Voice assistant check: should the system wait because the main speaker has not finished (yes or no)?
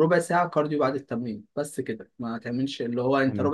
yes